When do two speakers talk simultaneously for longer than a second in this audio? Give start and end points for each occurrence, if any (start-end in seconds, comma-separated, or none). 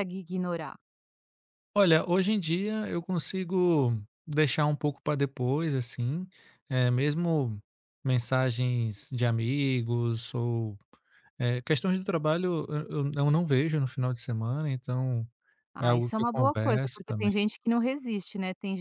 15.8-17.3